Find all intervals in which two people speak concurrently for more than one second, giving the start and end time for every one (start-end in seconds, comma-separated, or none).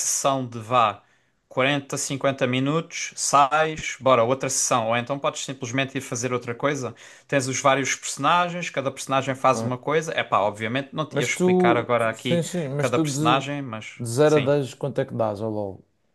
11.1-14.5